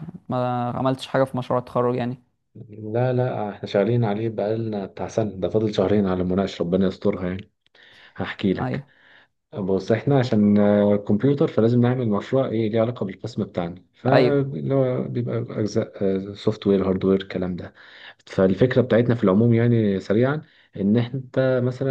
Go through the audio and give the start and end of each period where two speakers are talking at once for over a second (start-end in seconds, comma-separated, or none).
none